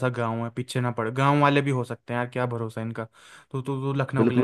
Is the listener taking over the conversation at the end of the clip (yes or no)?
yes